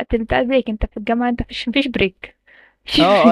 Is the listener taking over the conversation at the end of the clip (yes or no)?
yes